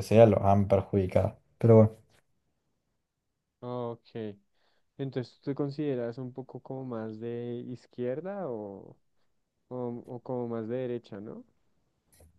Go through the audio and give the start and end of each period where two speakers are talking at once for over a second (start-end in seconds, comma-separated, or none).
none